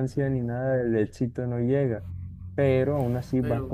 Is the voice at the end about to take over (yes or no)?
no